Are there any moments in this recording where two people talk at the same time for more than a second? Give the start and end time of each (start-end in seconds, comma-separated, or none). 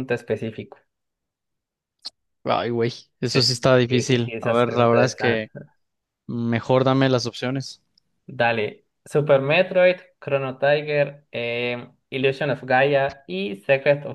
3.2-5.4